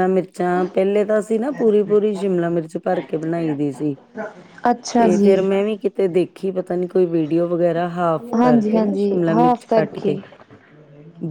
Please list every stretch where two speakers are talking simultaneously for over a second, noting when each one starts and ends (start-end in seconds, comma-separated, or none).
8.4-10.2